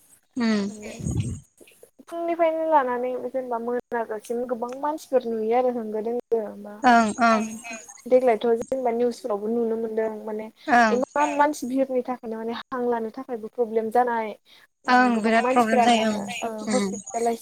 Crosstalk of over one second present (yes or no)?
yes